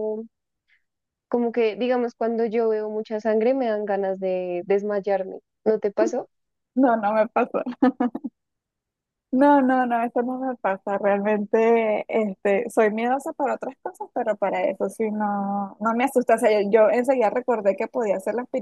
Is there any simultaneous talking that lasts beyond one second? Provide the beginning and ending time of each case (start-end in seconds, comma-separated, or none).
none